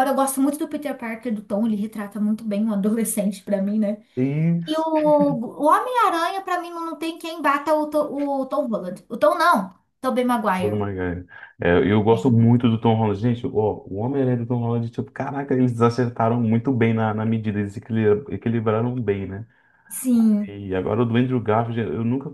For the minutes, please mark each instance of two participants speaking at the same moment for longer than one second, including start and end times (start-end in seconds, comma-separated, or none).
none